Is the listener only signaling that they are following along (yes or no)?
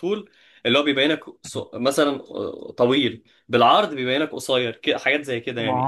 no